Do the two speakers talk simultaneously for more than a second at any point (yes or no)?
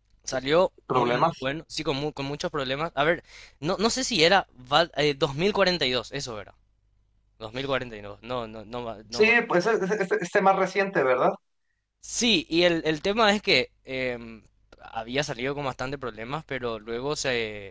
no